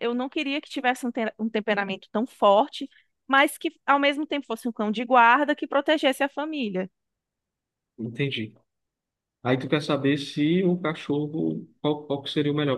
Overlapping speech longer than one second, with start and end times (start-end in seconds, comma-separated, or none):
none